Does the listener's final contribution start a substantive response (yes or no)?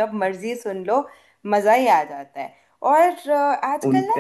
no